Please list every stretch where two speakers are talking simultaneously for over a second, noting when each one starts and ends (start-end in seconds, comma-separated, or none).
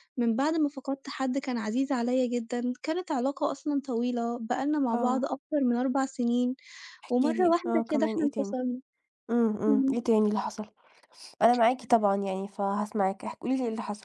7.1-8.5